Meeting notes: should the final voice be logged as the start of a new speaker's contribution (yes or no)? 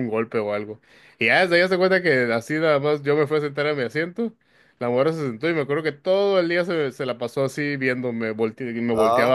no